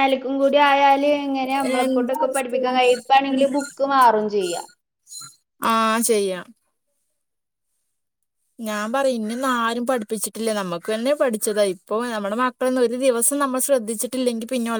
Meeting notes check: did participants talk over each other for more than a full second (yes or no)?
yes